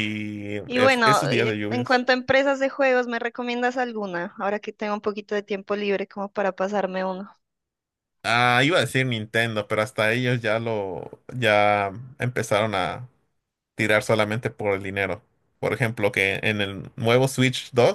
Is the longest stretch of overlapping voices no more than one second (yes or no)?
no